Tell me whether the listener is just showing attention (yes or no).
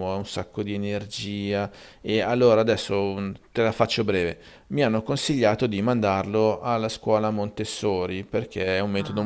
yes